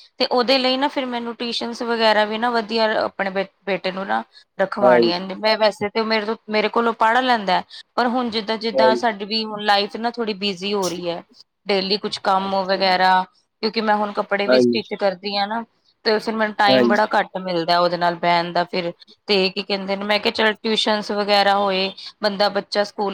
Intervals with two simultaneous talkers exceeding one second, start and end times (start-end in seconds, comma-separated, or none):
none